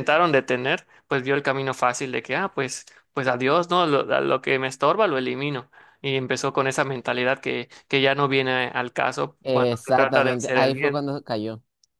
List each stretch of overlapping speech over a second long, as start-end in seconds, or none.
9.4-11.0